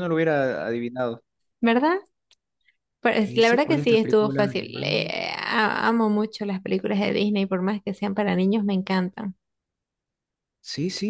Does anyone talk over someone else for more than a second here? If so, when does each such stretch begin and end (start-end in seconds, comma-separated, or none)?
3.2-5.0